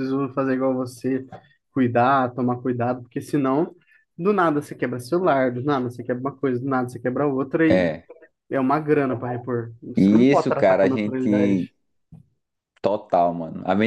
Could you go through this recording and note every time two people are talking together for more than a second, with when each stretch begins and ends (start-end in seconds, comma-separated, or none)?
10.0-11.7